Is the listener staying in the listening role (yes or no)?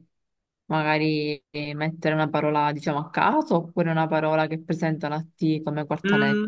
no